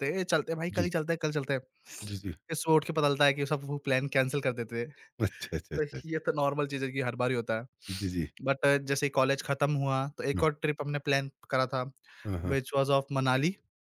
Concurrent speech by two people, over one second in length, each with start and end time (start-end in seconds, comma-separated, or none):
none